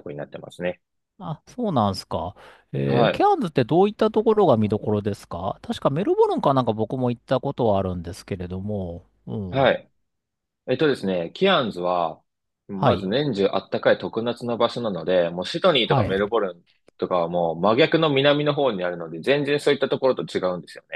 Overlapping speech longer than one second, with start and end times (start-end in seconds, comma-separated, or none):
none